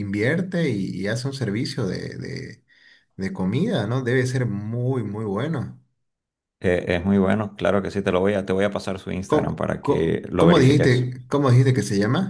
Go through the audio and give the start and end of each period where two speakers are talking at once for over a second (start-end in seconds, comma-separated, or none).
9.2-11.1